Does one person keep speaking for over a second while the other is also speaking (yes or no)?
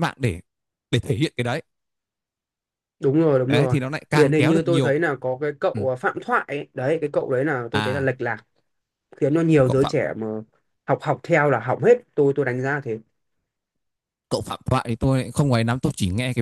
yes